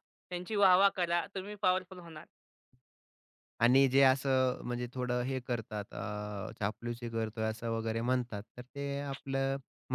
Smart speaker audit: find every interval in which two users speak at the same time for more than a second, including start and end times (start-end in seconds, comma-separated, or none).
none